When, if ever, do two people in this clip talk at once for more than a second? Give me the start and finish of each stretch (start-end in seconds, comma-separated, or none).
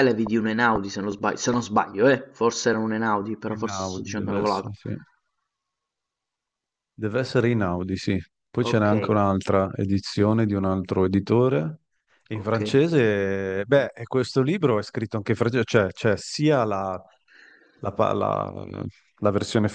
3.5-4.8